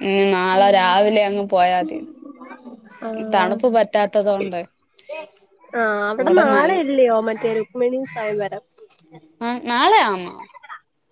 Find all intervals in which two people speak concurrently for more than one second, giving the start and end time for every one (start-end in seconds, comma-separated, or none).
none